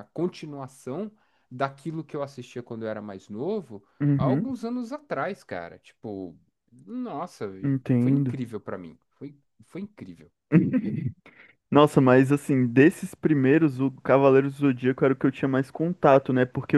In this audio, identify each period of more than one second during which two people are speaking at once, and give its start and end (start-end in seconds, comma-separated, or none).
none